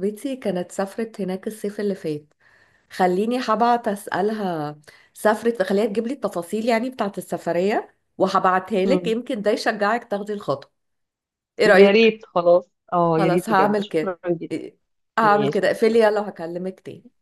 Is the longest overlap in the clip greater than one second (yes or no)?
yes